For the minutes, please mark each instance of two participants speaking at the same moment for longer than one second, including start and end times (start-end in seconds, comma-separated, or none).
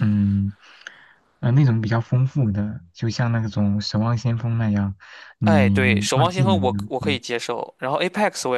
5.4-7.2